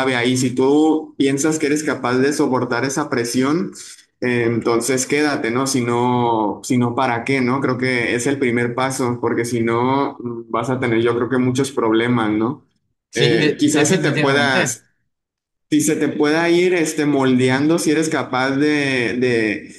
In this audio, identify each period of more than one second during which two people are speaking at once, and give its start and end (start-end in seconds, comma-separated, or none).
13.1-14.6